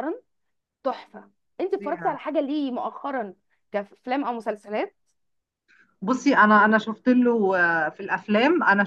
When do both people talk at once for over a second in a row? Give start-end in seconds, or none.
none